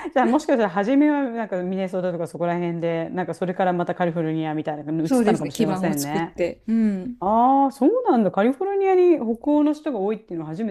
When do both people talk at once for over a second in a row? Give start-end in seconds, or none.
5.0-6.3